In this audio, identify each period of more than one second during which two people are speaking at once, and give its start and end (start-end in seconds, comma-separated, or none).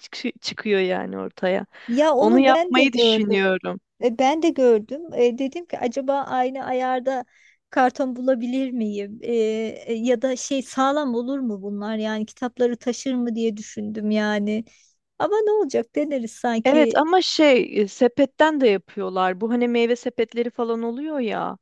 2.1-3.4